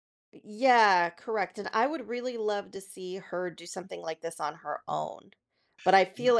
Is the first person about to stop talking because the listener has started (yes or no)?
no